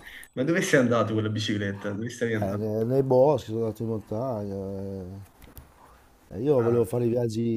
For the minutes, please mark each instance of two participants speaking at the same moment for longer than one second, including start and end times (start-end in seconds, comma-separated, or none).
none